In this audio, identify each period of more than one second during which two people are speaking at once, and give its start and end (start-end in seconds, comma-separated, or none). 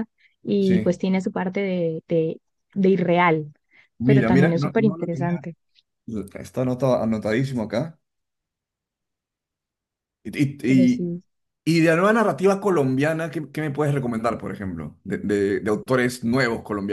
4.0-5.4